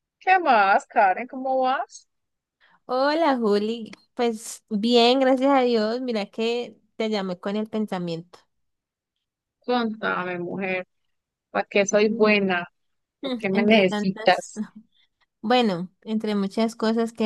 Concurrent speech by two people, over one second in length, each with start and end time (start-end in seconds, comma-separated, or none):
13.2-14.5